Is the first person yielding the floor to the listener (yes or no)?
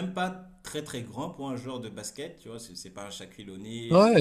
yes